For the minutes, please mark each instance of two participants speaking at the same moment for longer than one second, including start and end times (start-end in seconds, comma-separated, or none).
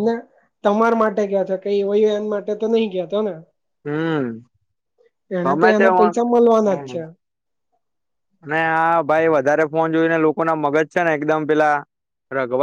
5.4-6.9